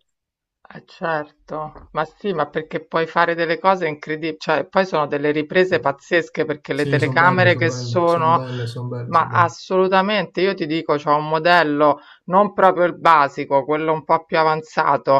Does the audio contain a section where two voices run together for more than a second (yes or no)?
yes